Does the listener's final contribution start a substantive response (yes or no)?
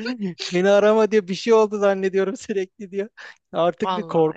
no